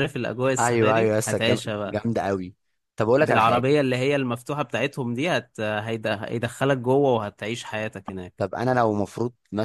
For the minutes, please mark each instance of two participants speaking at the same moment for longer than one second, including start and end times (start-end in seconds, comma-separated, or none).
0.6-2.0